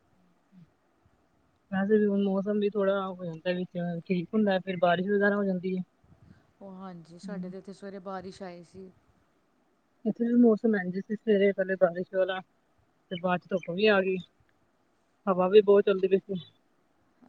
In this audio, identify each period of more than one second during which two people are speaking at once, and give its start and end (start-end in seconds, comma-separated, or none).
none